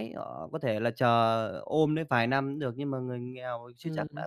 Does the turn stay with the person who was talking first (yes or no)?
yes